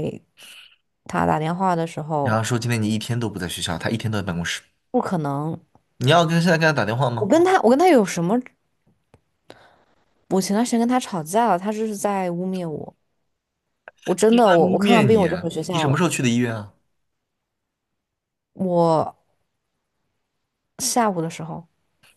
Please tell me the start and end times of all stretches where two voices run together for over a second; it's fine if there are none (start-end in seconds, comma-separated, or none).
14.2-16.0